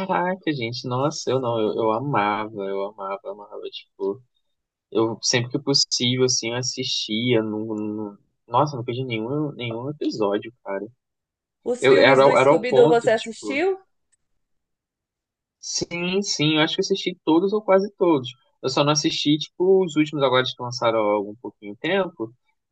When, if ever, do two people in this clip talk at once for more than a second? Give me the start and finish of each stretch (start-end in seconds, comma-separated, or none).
11.8-13.6